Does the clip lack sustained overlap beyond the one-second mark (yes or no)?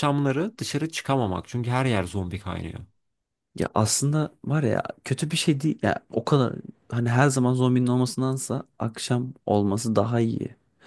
yes